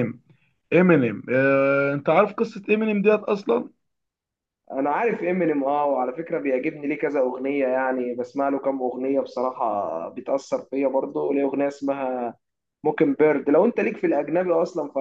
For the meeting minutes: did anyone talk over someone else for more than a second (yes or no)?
no